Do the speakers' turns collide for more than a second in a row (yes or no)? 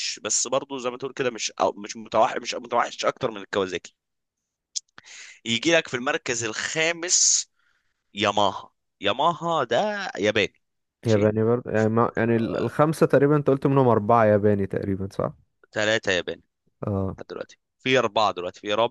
no